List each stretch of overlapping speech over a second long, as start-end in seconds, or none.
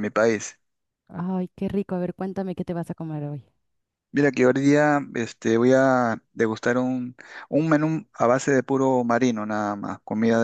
none